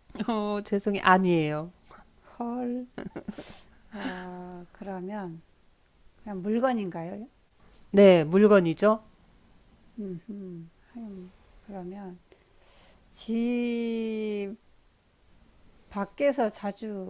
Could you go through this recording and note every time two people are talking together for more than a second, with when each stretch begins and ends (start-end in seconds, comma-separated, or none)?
none